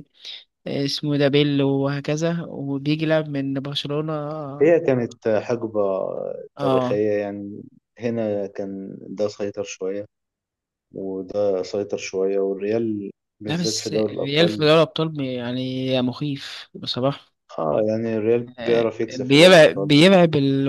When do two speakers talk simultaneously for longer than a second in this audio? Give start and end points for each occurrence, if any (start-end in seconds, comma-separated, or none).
13.5-14.7, 18.6-19.9